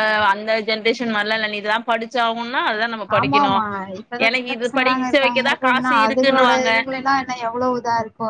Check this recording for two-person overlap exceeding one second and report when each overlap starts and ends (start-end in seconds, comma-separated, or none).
4.3-6.7